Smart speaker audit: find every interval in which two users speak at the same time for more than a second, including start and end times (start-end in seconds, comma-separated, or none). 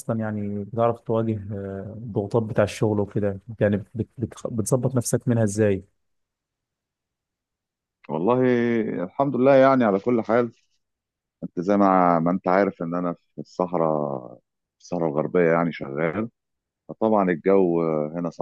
none